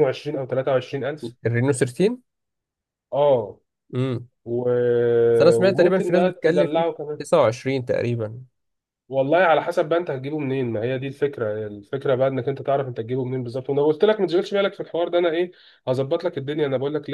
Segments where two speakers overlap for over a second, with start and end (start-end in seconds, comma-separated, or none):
5.6-7.2